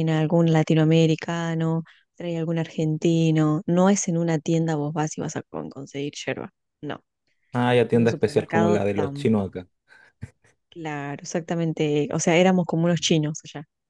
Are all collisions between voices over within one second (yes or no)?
no